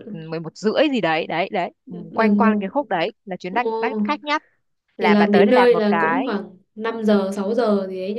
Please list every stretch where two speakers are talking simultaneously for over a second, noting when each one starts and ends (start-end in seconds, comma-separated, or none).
5.0-6.3